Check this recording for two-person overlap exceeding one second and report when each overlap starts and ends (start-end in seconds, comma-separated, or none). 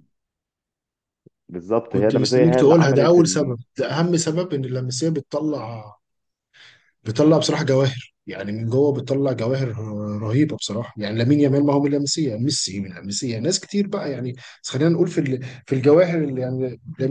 1.9-3.6